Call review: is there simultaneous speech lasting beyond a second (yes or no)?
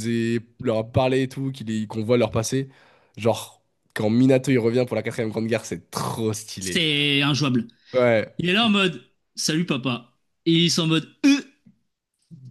no